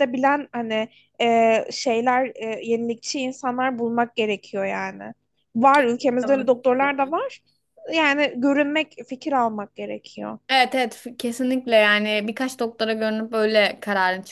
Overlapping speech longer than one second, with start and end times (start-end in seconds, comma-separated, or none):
5.7-7.2